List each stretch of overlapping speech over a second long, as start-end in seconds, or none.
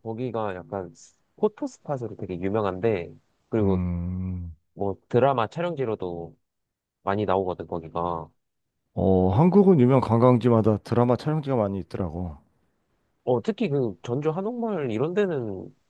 none